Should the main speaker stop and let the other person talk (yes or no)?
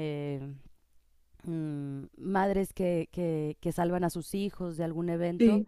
no